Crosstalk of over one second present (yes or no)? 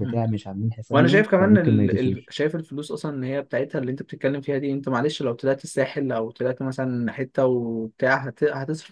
yes